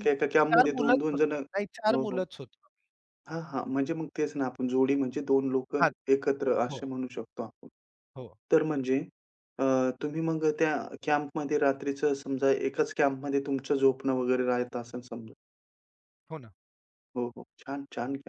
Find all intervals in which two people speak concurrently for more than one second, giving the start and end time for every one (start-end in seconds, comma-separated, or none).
0.5-2.2